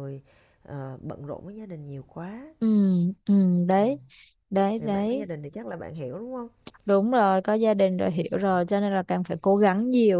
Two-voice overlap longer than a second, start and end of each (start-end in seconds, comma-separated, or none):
none